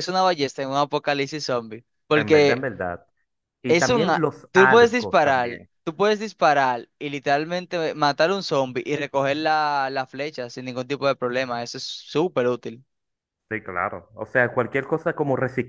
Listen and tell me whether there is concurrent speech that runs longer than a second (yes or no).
yes